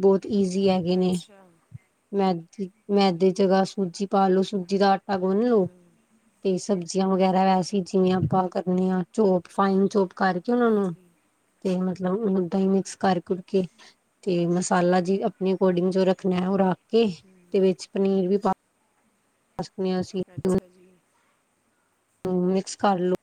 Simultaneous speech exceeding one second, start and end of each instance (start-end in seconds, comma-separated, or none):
none